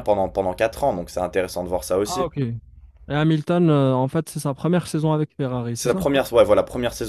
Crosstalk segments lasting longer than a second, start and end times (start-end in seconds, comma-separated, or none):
none